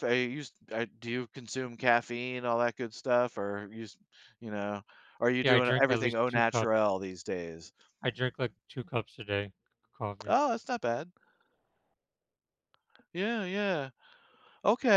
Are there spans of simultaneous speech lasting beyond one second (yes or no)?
yes